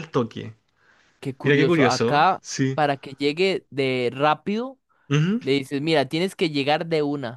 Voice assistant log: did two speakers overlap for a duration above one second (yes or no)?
yes